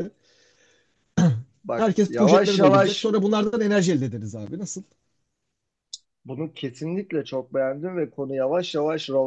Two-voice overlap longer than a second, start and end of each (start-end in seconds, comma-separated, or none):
1.8-3.0